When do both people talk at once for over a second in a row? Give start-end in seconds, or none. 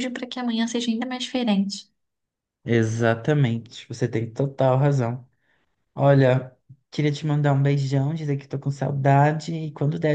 none